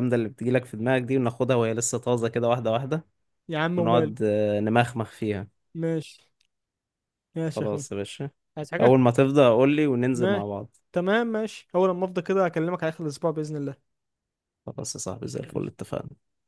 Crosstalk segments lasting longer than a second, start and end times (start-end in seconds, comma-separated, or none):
none